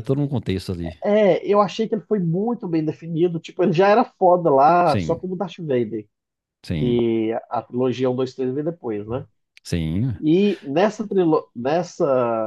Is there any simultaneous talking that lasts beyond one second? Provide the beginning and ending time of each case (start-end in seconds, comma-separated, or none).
none